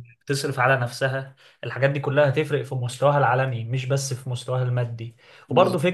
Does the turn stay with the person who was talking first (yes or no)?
yes